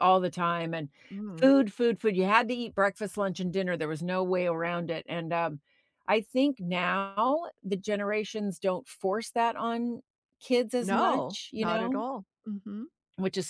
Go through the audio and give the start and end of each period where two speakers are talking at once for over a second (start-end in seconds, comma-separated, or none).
10.8-12.0